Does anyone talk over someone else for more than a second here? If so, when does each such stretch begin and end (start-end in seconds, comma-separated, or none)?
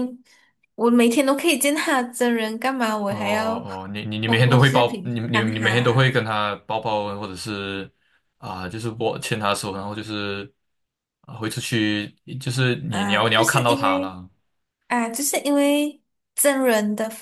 4.2-6.1, 12.9-14.1